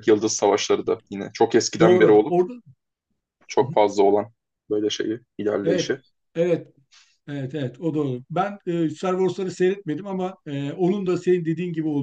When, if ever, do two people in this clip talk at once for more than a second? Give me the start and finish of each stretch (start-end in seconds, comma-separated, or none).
none